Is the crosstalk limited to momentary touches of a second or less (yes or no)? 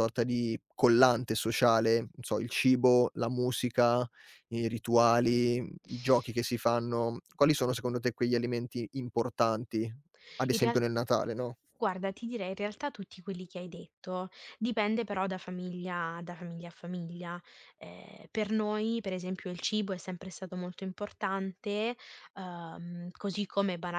yes